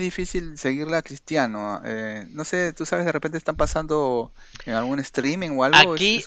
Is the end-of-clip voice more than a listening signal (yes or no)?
yes